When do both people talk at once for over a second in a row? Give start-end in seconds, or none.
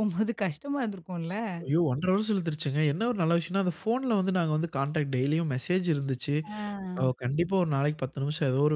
none